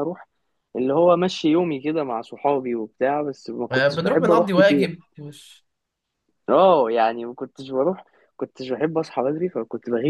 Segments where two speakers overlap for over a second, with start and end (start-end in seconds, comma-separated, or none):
3.7-4.9